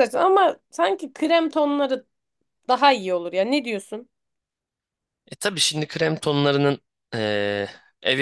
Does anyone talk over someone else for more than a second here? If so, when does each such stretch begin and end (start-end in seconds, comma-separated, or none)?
none